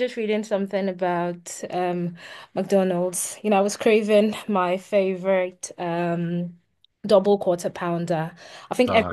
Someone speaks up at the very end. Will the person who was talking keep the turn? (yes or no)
yes